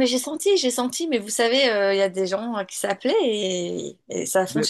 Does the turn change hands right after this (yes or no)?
no